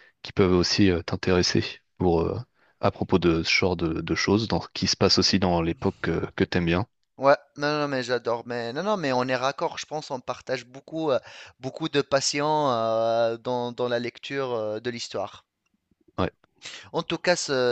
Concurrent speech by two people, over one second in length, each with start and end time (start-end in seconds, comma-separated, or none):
none